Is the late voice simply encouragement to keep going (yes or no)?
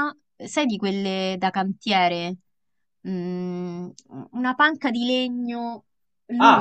no